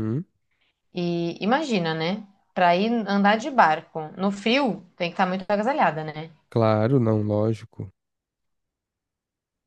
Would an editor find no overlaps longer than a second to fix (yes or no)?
yes